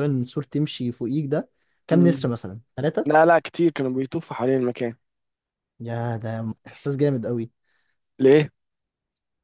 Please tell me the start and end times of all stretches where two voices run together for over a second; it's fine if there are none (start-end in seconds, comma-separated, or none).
none